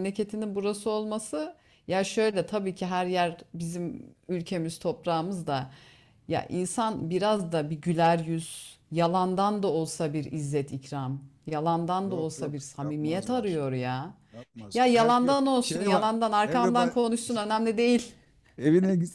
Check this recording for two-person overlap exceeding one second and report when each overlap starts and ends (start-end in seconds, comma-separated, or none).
12.0-13.6, 14.7-16.9